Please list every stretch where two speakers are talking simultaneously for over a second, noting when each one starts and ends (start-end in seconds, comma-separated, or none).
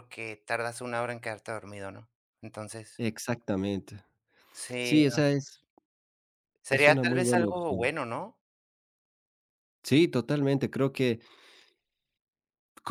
6.7-7.9